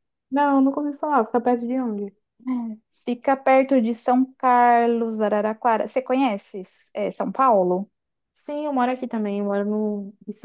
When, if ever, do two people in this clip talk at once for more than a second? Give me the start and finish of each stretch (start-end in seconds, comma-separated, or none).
none